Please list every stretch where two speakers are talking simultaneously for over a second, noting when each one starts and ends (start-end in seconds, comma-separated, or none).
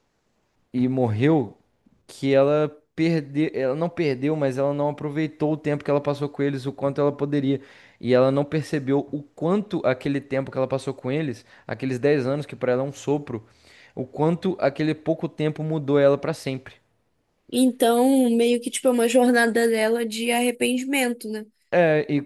none